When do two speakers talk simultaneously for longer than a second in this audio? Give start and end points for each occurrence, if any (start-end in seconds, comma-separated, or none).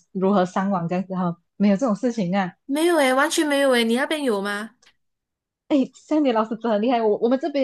none